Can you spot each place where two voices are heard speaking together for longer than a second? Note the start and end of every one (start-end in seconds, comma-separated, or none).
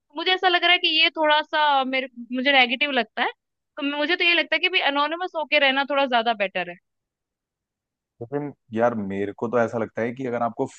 none